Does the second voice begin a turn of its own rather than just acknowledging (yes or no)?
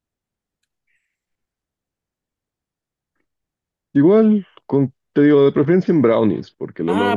yes